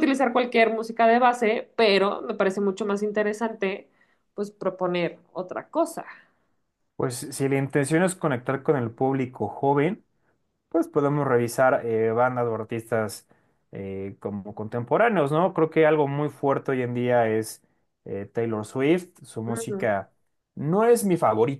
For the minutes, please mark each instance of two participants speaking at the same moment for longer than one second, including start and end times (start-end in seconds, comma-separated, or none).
none